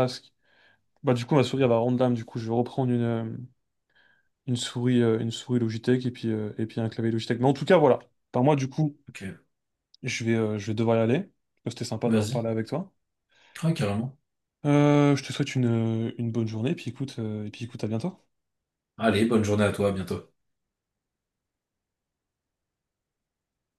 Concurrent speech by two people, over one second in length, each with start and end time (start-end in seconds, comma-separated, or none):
none